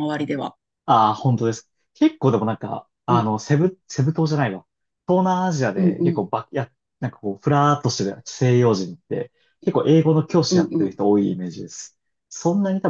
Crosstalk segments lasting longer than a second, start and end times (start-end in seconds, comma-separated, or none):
none